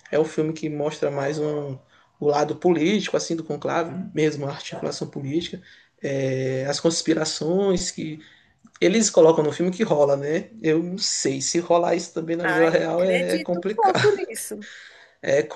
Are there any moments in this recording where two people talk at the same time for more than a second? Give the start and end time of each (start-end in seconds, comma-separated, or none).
12.4-14.0